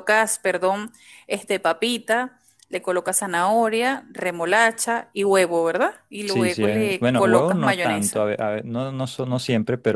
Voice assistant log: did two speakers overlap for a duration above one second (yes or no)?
yes